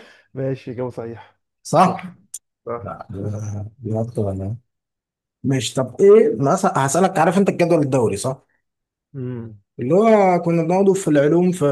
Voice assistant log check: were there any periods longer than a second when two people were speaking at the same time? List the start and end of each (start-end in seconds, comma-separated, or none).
none